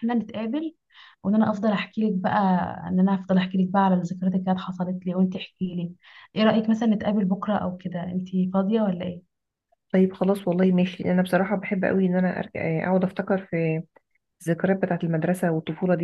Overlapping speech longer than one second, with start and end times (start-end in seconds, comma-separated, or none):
none